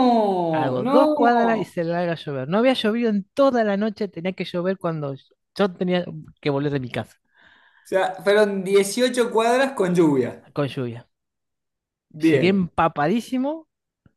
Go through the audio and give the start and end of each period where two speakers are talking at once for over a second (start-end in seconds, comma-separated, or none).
0.5-1.7